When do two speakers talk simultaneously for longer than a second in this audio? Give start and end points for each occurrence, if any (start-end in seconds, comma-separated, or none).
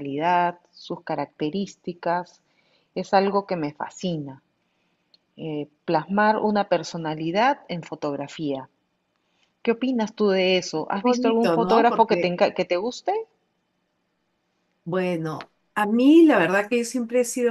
10.9-12.3